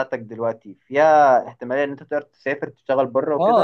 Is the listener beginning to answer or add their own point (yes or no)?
yes